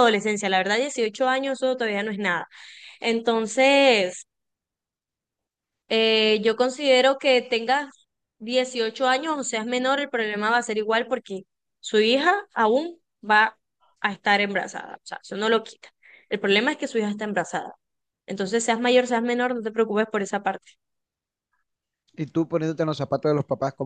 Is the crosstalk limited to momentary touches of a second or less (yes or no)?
yes